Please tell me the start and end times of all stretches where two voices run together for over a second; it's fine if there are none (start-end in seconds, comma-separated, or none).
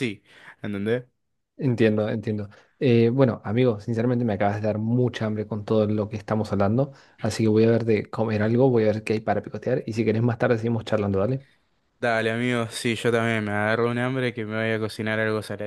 none